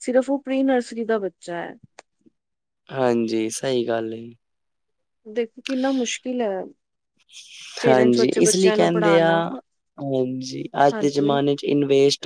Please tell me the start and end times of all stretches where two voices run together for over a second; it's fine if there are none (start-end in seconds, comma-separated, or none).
7.9-9.3